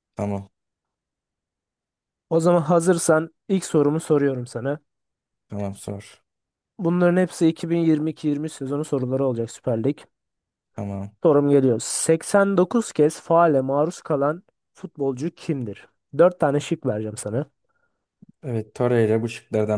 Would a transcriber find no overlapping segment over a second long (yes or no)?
yes